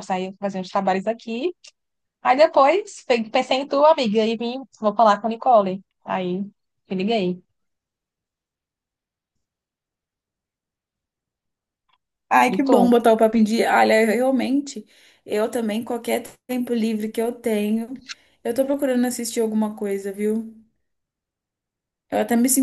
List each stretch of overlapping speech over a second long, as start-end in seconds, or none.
none